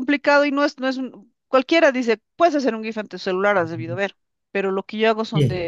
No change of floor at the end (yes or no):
yes